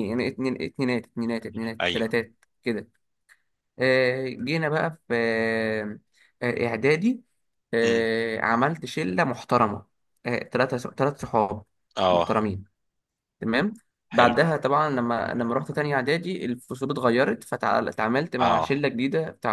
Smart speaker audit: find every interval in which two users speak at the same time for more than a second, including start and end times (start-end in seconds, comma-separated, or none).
none